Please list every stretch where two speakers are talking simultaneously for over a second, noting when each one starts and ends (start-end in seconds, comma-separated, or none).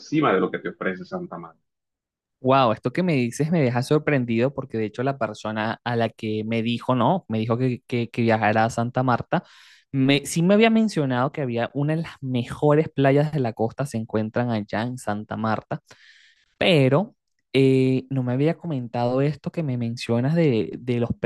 none